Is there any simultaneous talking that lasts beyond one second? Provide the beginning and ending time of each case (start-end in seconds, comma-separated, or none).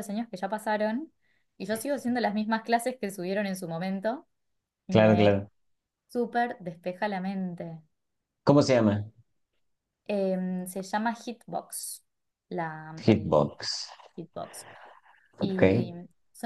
none